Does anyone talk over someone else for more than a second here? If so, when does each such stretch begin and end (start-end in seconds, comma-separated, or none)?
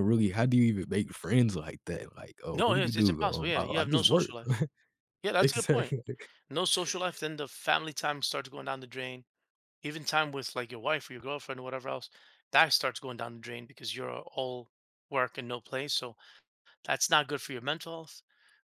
2.5-4.3